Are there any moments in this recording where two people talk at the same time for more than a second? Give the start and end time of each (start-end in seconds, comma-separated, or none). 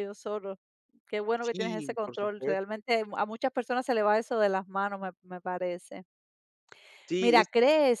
1.4-2.6